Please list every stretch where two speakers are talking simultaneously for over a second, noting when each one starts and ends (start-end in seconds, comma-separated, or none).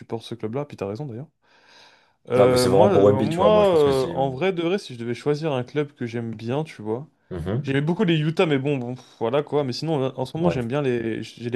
2.4-4.1